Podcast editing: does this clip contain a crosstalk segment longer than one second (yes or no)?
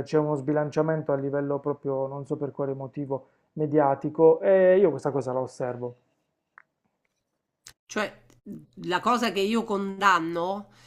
no